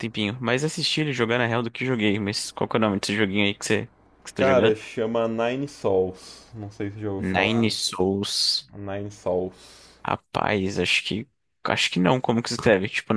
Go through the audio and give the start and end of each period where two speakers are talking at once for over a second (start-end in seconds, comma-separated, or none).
none